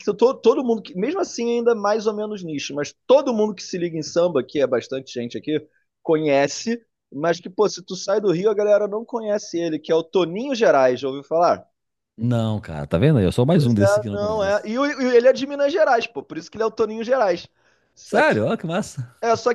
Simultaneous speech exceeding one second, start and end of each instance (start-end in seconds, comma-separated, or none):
13.5-14.8